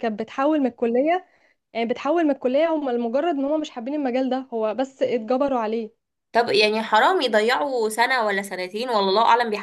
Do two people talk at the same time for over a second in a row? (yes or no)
no